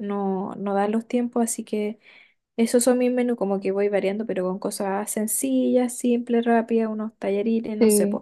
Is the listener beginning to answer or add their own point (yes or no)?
yes